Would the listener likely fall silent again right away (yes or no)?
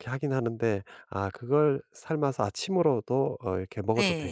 no